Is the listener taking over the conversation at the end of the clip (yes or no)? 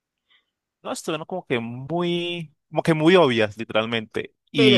no